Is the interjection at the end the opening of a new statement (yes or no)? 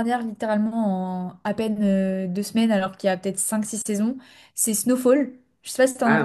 yes